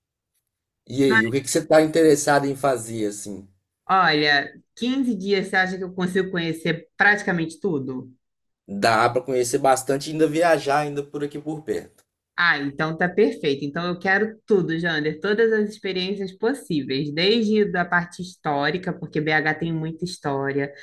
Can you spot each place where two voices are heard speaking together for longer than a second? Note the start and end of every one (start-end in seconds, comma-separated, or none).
none